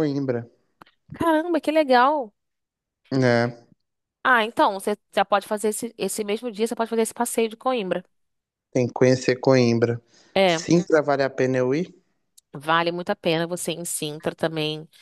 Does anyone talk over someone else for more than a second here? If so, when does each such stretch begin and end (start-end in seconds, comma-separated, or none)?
none